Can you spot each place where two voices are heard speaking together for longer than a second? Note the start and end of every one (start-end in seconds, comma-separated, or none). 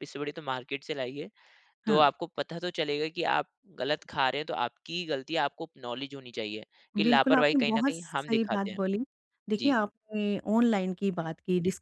7.0-8.8